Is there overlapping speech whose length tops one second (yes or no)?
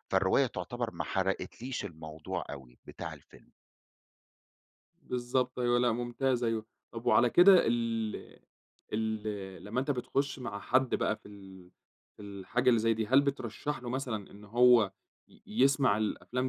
no